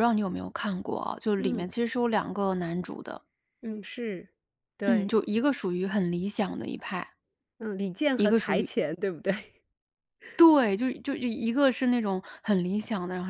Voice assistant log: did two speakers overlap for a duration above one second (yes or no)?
no